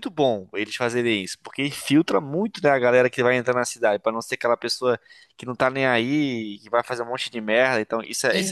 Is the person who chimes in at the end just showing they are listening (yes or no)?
no